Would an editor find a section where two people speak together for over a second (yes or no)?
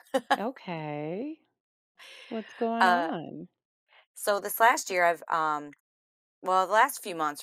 no